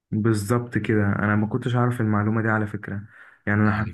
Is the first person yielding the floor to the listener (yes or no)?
yes